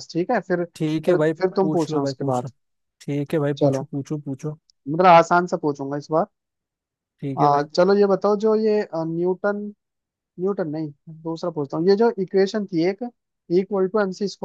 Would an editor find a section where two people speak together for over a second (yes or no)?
yes